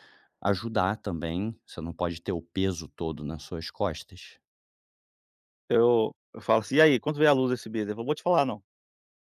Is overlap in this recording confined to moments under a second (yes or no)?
yes